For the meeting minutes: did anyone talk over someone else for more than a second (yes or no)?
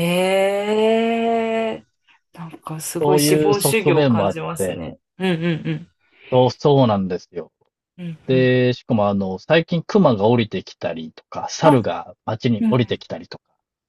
yes